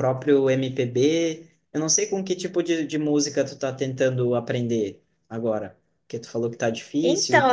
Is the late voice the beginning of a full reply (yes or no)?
yes